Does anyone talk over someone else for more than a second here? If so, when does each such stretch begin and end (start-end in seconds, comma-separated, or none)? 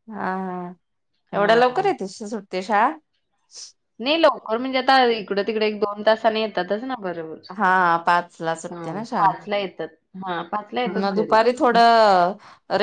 none